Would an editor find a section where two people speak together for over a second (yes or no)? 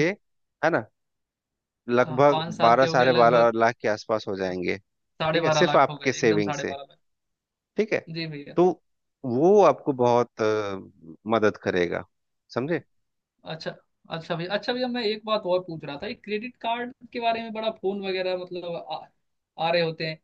yes